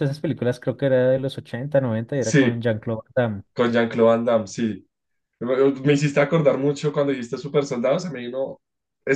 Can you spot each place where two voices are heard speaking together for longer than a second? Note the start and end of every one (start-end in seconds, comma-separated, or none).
none